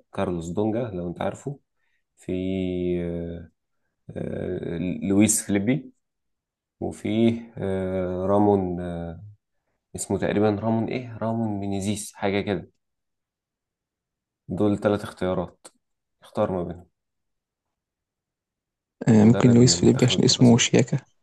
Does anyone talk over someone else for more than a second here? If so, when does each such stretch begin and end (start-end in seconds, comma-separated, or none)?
19.2-20.7